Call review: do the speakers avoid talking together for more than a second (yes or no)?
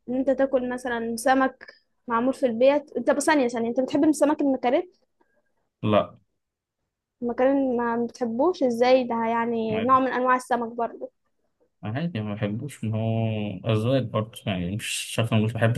yes